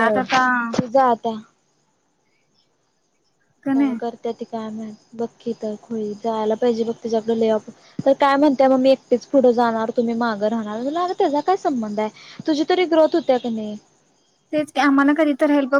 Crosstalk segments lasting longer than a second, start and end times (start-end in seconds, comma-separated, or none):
none